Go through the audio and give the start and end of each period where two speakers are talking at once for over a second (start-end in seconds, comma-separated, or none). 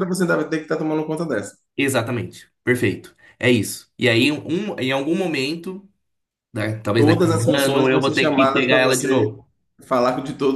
6.9-9.3